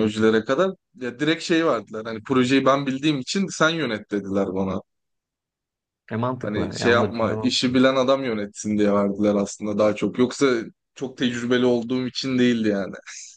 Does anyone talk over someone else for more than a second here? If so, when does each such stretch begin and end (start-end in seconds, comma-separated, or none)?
6.4-7.8